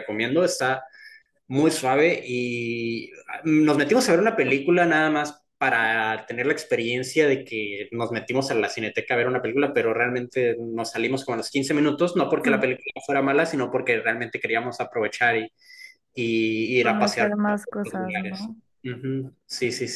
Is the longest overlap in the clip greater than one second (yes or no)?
yes